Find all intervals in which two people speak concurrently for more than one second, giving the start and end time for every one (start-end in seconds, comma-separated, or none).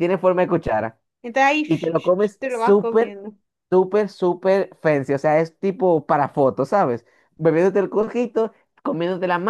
1.6-3.2